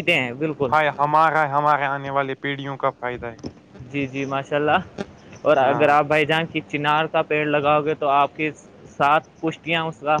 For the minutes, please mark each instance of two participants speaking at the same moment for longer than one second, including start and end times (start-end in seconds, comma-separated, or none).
none